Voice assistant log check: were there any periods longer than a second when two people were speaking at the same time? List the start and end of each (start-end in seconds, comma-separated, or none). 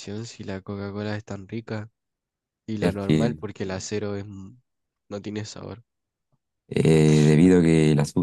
none